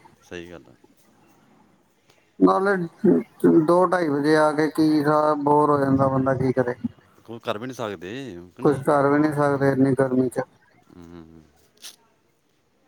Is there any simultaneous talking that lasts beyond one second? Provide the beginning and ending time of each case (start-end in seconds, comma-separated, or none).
none